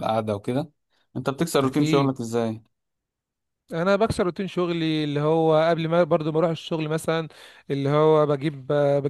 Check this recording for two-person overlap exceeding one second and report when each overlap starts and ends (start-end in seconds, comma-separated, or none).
none